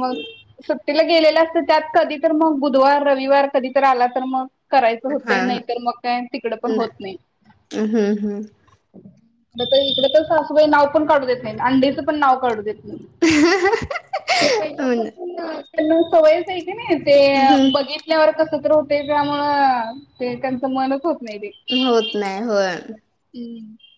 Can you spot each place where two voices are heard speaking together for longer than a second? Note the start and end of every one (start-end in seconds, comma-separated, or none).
none